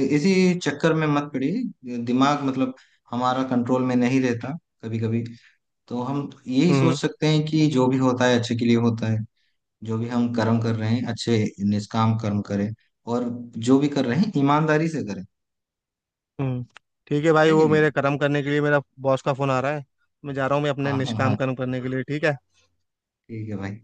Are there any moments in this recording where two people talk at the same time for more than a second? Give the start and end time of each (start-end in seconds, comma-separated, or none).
none